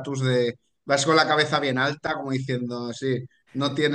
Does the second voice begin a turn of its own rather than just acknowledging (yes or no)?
no